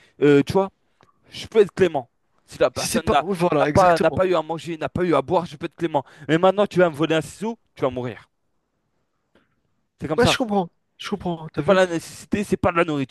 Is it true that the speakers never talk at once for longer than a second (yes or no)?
no